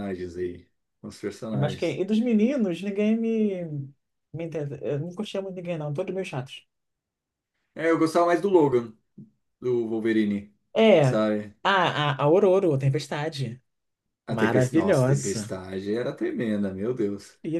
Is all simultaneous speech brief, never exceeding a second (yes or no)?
no